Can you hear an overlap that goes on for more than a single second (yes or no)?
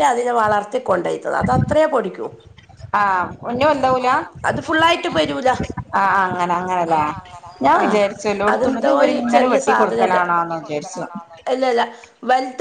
no